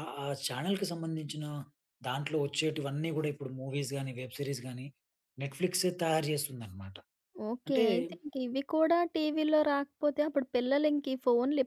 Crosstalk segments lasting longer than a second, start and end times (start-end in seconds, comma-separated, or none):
none